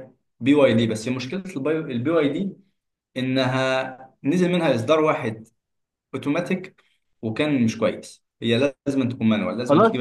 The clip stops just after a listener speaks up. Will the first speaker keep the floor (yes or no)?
no